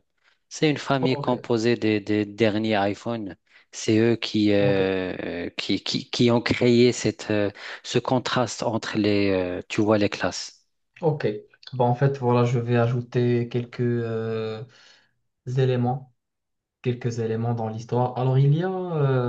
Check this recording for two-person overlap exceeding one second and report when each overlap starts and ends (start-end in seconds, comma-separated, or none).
none